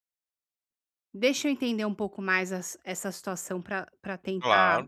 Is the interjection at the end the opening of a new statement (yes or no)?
yes